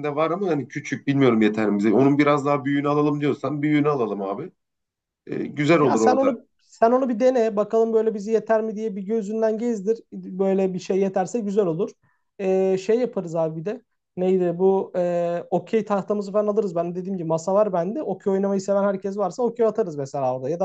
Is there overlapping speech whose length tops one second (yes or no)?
no